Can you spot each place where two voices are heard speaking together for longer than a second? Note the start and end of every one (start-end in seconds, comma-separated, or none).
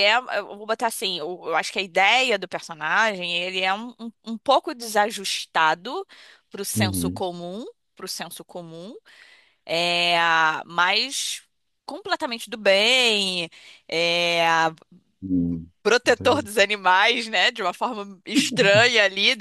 none